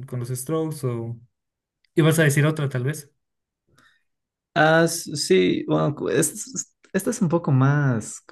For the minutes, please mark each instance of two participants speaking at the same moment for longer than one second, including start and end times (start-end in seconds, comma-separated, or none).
none